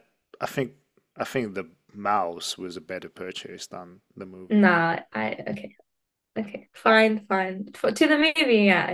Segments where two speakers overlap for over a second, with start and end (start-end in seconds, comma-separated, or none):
none